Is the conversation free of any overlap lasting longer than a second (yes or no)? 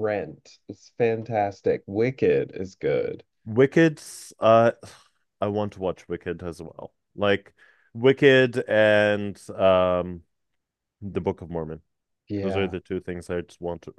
yes